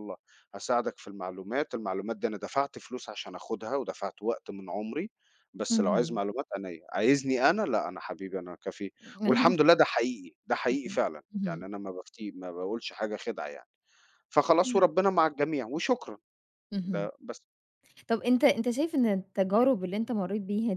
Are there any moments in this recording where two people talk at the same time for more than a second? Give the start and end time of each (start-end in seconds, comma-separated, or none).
none